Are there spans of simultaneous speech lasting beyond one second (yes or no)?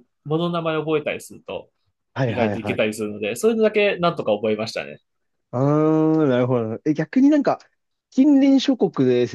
no